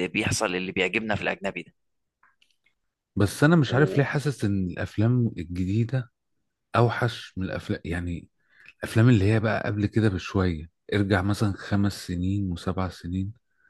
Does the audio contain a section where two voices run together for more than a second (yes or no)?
no